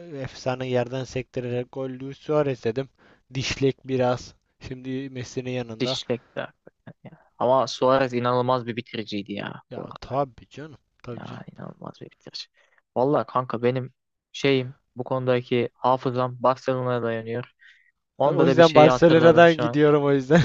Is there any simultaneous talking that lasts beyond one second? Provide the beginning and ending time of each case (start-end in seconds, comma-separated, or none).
18.2-19.8